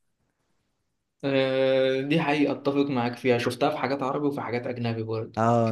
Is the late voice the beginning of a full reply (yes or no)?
yes